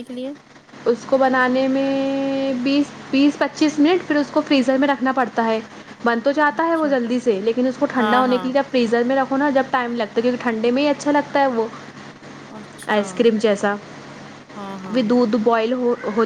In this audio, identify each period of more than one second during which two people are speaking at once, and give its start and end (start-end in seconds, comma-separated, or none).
none